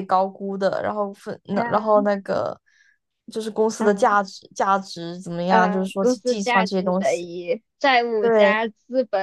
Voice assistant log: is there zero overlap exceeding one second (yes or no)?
no